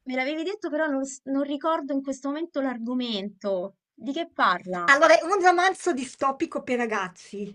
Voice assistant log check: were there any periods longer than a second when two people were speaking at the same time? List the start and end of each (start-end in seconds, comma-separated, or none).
none